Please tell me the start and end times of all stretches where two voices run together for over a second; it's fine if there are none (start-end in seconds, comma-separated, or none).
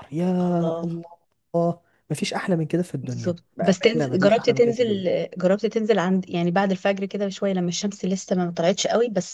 3.0-5.0